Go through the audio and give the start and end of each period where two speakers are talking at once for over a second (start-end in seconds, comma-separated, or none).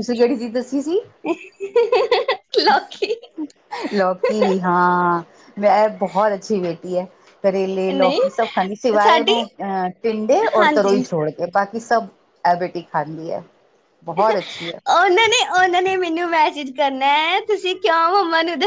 none